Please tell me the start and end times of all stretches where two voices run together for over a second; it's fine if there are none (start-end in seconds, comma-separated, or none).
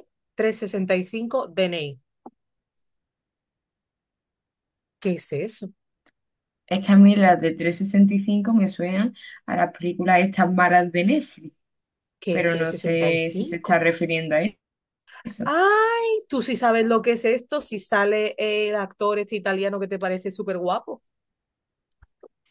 12.3-13.8